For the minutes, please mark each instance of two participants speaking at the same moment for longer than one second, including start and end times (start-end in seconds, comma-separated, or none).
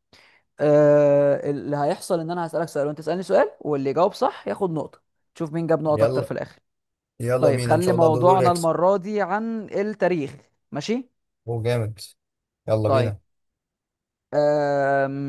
7.4-8.7